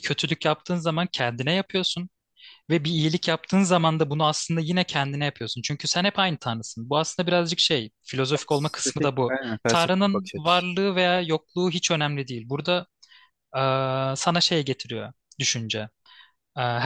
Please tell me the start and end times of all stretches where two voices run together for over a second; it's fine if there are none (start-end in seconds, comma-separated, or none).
8.3-10.6